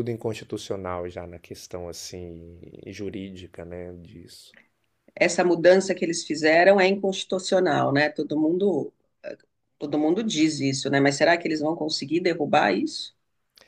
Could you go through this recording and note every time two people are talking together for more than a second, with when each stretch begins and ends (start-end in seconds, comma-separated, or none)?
none